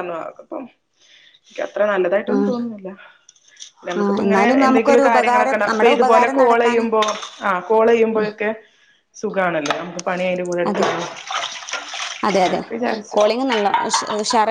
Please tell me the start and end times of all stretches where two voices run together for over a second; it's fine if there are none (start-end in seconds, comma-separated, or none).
4.0-6.8